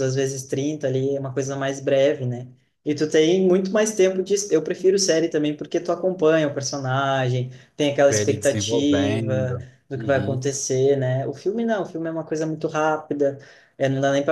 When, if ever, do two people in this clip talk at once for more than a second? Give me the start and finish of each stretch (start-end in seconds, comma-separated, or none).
8.1-10.4